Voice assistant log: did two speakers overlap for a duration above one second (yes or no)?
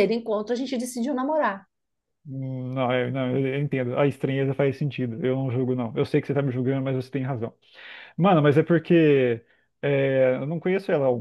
no